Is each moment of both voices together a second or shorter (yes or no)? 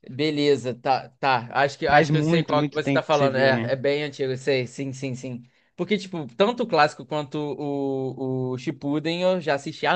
no